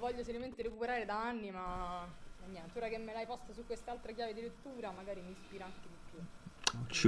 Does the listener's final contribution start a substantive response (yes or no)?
yes